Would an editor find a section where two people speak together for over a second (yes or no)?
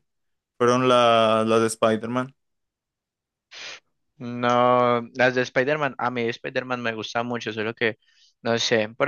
no